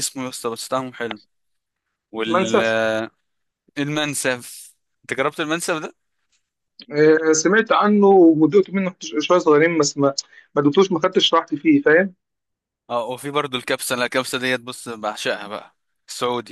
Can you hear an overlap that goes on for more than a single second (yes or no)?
no